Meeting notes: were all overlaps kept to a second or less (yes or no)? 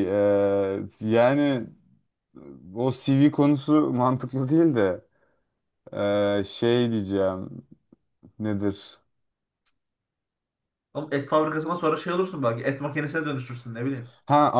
yes